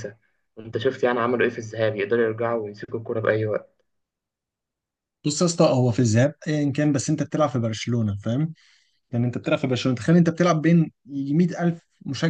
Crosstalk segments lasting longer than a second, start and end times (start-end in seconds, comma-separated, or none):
none